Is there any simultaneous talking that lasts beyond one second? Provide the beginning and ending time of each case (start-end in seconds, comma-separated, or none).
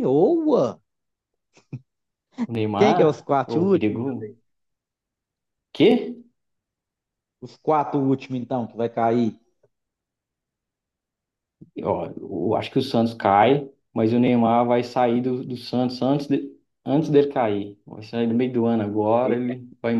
2.8-4.0